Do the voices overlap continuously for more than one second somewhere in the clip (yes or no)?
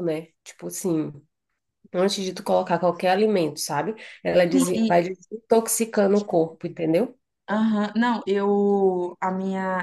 no